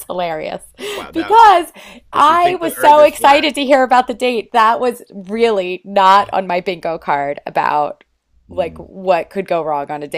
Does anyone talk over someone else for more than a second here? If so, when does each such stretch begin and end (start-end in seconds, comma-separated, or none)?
2.1-3.5